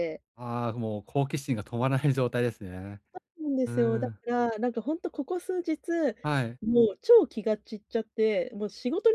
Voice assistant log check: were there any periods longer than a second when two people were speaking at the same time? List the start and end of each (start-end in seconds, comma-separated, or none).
none